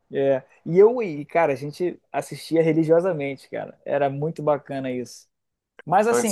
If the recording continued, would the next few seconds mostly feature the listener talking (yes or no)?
yes